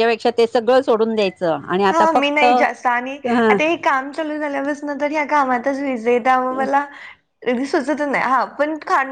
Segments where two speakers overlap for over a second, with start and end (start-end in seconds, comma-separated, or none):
none